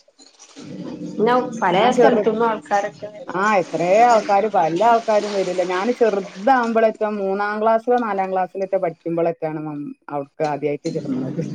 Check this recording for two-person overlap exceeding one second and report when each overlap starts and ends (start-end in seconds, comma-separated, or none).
none